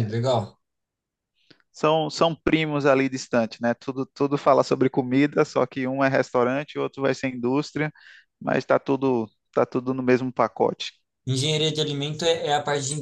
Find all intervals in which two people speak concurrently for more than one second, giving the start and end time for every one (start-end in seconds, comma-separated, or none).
none